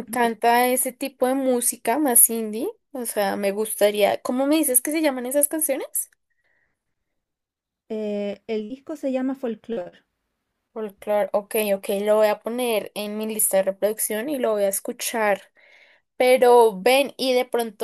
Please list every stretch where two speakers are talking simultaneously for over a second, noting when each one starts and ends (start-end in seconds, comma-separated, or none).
none